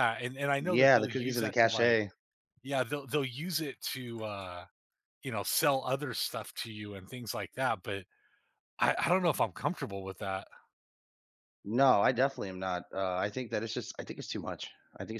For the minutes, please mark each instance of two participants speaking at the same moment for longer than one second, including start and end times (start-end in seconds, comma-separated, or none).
0.6-2.0